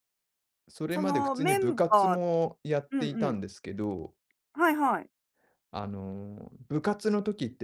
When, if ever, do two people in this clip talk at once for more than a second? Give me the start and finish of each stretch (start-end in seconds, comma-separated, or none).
0.9-2.2